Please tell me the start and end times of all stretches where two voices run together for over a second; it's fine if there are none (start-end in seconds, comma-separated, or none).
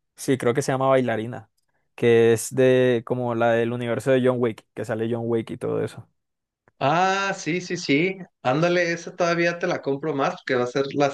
none